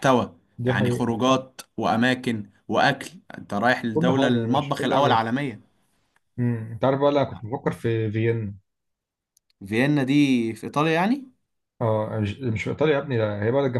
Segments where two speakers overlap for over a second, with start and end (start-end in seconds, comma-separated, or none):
3.9-5.2